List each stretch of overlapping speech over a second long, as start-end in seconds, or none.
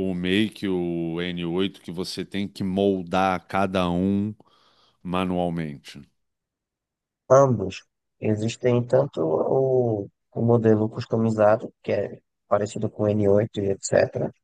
none